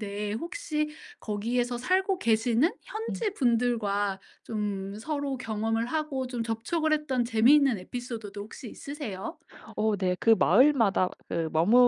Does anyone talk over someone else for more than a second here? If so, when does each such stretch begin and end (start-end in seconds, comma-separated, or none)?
none